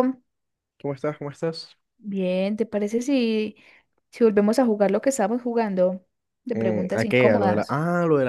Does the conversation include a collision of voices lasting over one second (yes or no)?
yes